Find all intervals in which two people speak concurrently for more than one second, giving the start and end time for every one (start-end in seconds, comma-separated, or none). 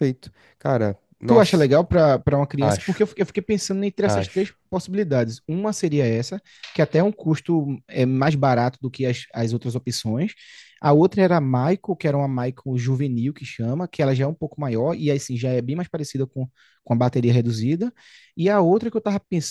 none